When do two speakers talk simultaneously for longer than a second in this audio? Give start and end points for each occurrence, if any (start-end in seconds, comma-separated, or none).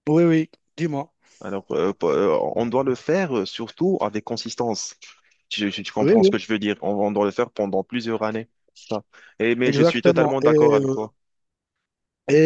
9.7-11.1